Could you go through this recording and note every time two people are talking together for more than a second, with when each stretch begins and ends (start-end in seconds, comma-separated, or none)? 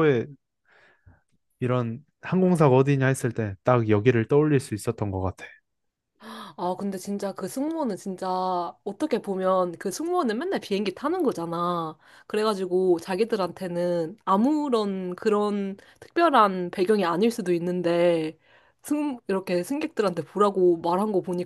none